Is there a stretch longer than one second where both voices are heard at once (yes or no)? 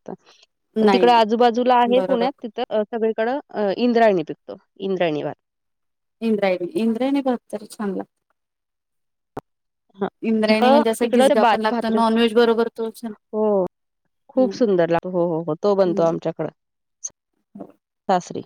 yes